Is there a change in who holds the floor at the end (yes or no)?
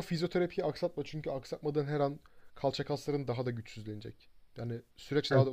yes